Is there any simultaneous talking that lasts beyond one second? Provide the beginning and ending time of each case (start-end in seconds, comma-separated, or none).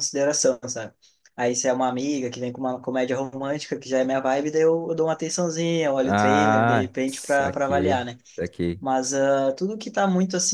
6.0-8.2